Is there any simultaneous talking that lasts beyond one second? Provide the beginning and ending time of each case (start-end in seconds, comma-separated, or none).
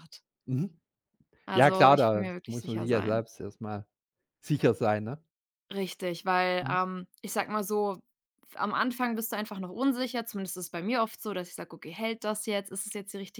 1.5-3.2